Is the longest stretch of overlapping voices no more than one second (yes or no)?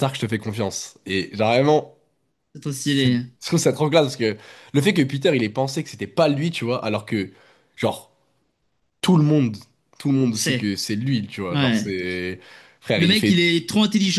yes